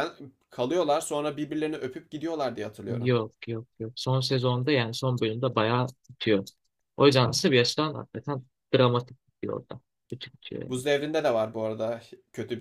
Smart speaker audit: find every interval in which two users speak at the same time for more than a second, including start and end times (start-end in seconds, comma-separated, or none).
none